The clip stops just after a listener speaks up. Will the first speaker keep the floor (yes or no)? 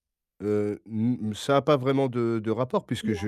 yes